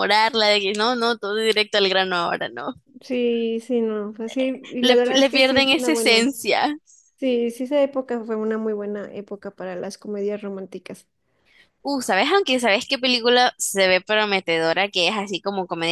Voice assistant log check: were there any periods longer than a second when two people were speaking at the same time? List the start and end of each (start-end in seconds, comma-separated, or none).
4.8-6.3